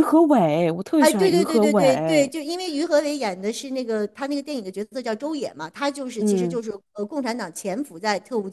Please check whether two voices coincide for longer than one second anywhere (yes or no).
yes